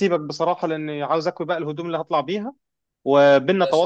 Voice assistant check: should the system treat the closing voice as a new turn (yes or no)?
no